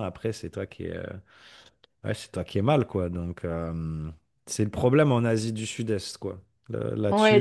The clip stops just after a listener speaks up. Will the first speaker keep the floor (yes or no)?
no